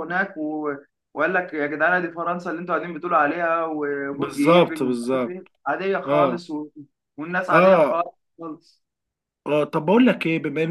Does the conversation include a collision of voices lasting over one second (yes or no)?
yes